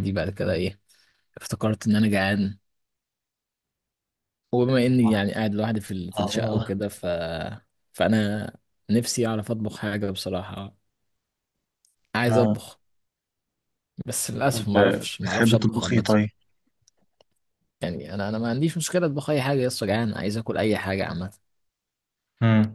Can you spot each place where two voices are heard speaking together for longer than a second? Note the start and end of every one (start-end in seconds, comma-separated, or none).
14.5-16.1